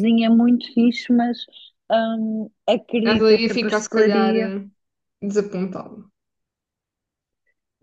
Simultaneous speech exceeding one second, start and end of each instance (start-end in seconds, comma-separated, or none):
3.0-4.5